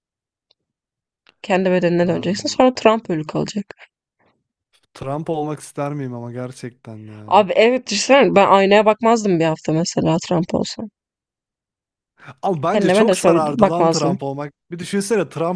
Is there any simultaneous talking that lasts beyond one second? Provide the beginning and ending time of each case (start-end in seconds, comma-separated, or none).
12.7-14.2